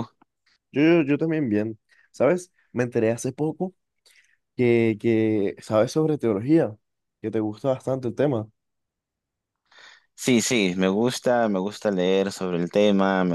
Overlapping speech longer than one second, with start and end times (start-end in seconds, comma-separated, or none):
none